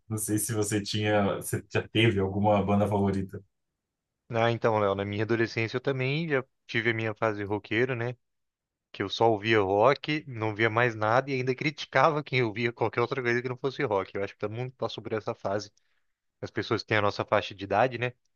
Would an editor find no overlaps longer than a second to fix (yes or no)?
yes